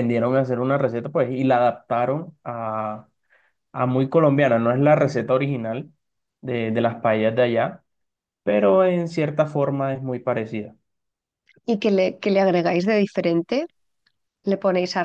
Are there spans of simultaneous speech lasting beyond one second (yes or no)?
no